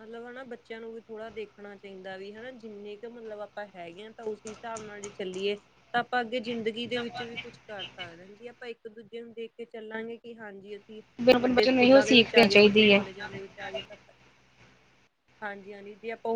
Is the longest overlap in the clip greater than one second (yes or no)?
yes